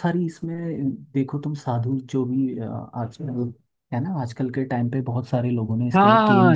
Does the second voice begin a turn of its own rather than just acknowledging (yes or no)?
yes